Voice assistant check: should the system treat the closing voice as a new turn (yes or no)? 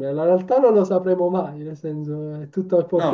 yes